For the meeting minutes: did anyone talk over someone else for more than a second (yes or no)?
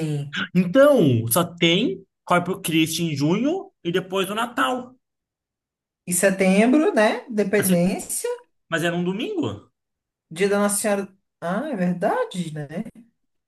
no